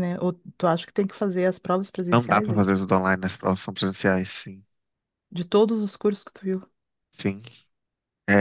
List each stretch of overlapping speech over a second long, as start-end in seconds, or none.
none